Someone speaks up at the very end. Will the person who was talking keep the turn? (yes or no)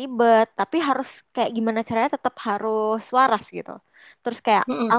yes